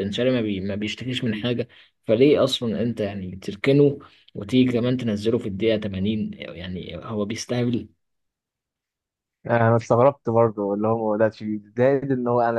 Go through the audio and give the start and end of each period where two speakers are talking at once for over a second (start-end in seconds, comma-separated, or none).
none